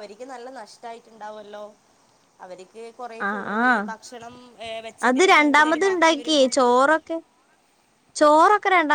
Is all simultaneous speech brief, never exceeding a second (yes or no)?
no